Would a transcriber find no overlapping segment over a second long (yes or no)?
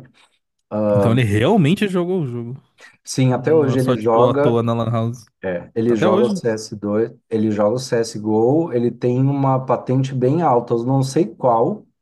no